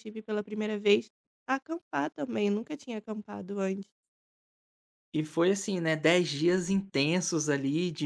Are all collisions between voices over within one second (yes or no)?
yes